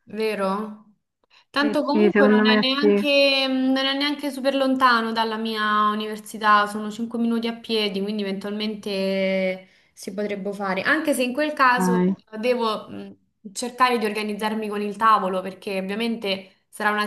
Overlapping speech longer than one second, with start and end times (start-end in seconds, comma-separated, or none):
1.6-3.0